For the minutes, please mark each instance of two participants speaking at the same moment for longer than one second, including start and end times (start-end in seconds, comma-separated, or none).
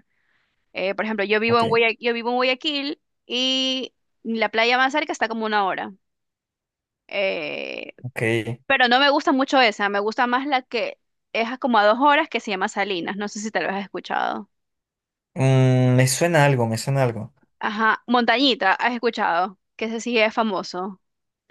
none